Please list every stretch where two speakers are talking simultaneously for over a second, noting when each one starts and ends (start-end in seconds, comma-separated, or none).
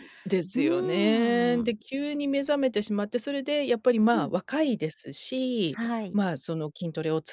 0.5-1.8